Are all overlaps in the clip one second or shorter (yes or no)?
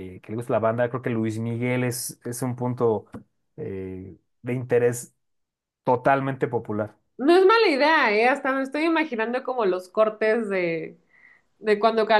yes